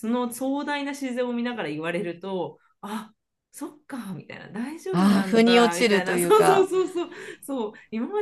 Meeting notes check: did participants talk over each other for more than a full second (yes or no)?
yes